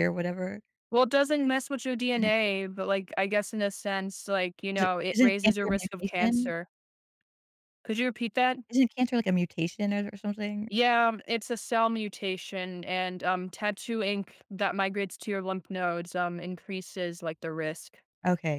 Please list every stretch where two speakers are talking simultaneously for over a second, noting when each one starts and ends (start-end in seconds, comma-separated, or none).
4.8-6.5